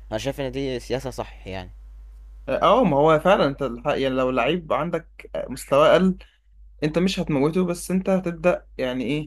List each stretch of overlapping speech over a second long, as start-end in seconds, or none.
none